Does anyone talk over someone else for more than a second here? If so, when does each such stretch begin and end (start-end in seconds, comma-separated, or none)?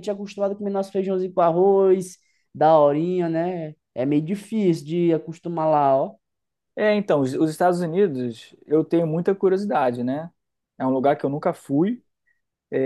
none